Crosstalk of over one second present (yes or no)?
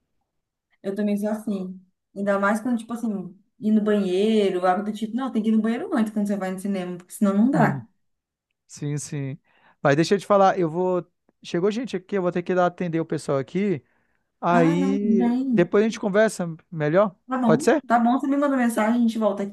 yes